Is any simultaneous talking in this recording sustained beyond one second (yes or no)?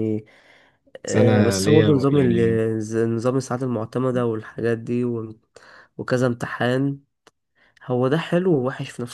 yes